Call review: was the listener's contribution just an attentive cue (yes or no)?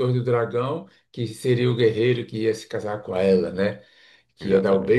yes